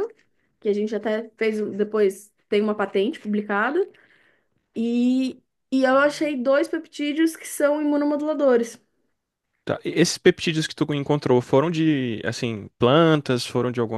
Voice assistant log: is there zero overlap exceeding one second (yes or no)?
yes